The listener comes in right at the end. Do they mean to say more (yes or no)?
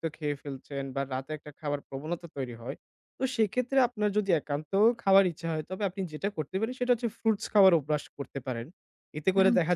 no